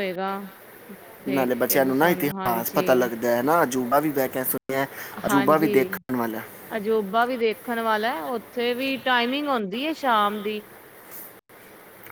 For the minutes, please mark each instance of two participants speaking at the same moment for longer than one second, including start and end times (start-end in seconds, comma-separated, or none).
1.3-3.1